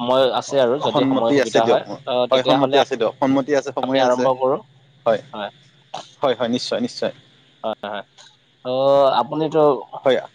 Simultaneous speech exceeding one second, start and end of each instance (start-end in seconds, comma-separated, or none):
0.9-2.8